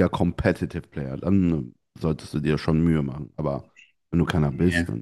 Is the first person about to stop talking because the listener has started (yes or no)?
no